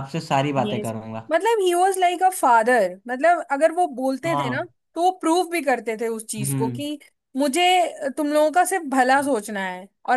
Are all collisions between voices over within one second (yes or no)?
yes